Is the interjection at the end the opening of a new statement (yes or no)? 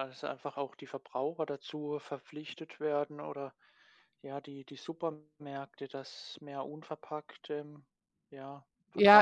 yes